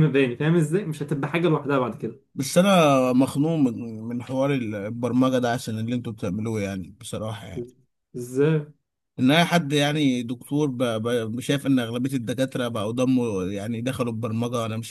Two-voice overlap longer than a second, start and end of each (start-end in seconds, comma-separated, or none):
none